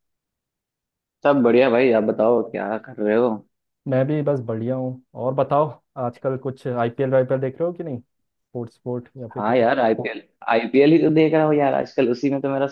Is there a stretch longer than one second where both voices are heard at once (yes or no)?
no